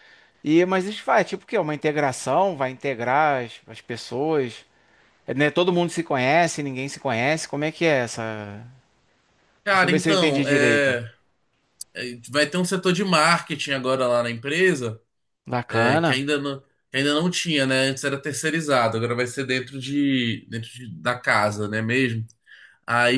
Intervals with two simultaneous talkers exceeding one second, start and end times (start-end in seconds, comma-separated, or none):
9.7-11.0